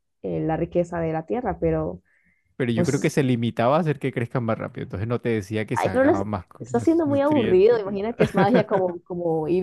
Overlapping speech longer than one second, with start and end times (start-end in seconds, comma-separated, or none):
5.7-8.8